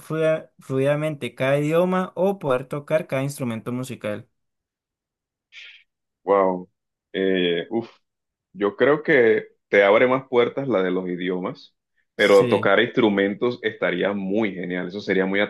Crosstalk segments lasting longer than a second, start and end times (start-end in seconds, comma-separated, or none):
none